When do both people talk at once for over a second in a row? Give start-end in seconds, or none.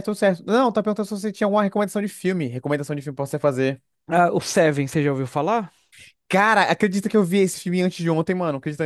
none